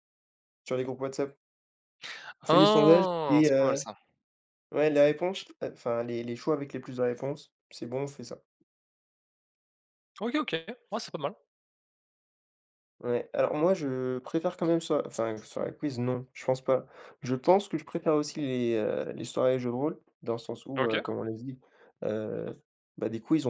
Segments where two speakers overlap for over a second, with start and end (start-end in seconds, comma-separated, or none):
2.5-3.8